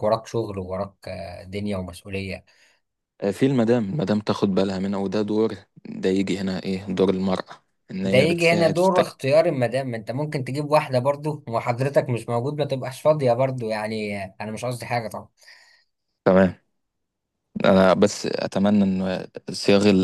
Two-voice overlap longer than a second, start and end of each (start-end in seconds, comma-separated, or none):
8.0-9.2